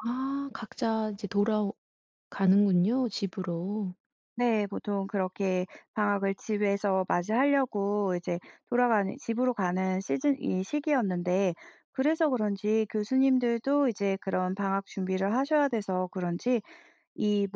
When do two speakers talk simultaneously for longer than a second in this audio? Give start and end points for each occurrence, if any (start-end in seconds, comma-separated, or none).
none